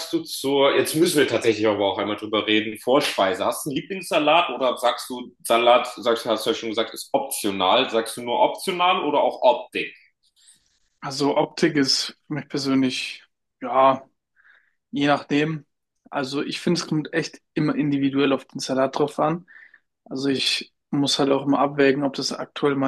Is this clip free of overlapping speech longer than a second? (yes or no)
yes